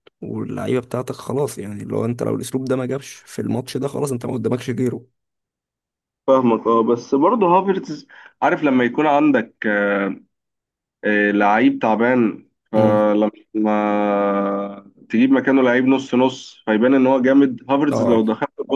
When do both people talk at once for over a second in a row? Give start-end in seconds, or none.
none